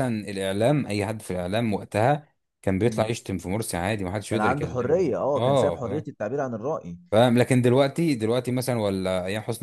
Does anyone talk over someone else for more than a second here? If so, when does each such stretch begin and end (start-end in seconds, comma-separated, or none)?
4.3-6.0